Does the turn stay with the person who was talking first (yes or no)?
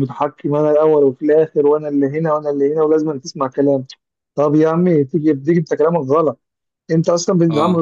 yes